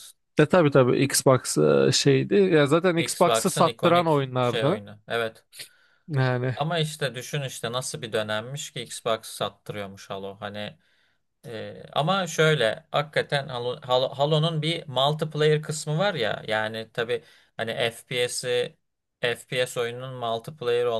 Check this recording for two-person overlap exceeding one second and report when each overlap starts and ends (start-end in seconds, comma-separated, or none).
3.0-4.8